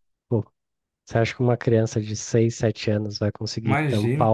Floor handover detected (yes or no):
no